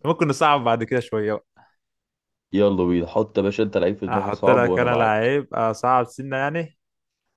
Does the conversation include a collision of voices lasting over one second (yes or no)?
yes